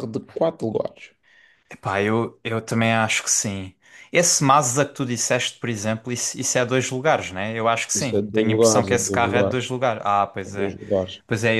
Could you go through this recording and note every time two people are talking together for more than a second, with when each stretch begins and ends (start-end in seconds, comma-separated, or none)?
8.0-9.6